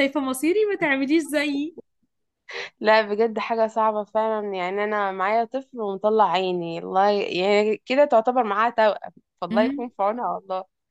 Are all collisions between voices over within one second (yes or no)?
yes